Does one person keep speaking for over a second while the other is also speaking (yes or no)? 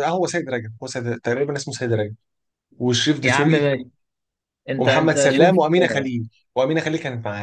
yes